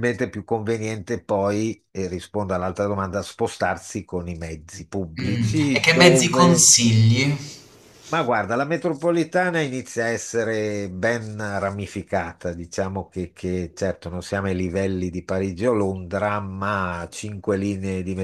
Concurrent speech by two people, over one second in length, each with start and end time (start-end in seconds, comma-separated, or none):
5.2-6.7